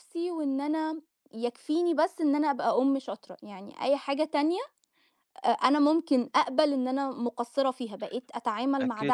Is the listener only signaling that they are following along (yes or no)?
no